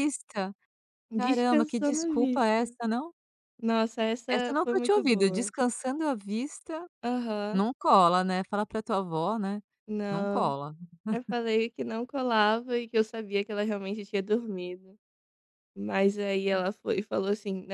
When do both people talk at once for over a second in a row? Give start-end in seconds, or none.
1.2-2.8, 4.3-5.5